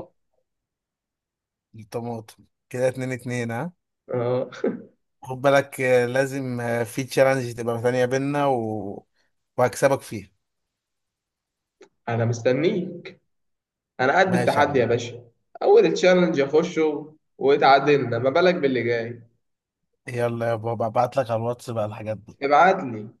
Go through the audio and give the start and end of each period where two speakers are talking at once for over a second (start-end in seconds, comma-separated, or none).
none